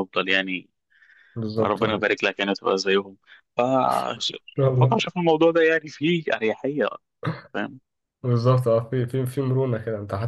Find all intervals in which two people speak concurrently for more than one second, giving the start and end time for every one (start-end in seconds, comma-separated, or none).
none